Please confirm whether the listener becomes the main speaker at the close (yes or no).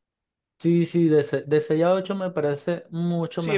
yes